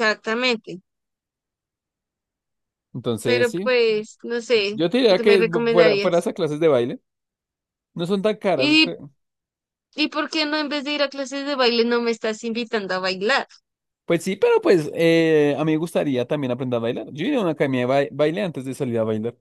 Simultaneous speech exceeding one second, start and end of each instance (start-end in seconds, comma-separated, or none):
4.7-6.3